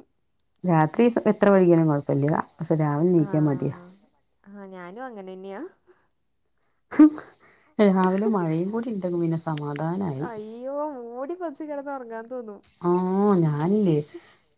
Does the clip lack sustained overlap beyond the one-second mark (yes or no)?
no